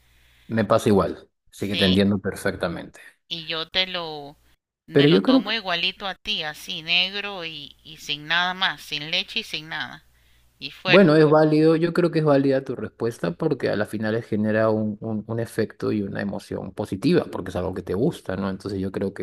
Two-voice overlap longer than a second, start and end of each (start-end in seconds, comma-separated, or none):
none